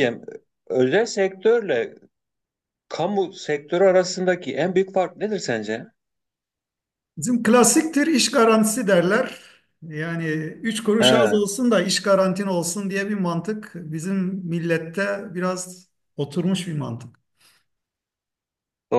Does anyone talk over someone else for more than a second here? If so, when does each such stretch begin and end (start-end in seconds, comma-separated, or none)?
none